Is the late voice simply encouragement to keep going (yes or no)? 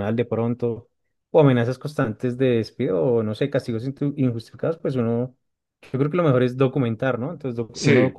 yes